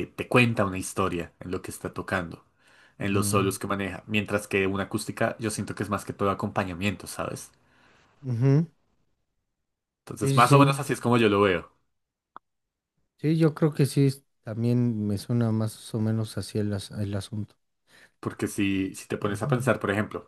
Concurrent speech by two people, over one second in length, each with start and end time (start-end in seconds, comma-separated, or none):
none